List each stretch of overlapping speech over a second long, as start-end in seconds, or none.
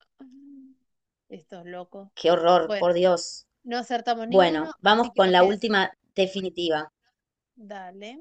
4.3-5.6